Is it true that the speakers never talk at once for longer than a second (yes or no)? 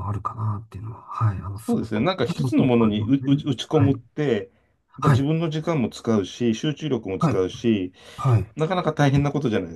no